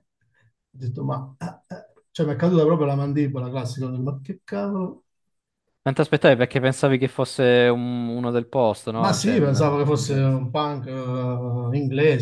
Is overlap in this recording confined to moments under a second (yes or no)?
no